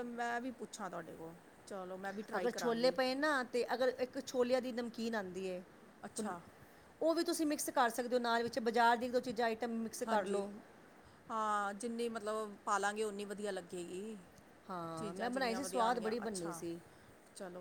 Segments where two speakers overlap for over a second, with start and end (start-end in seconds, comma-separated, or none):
15.0-16.6